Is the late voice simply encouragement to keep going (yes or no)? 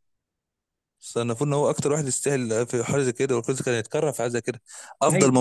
yes